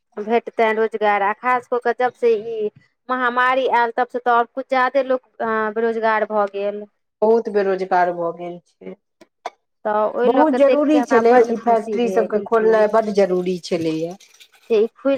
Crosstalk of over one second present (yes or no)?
yes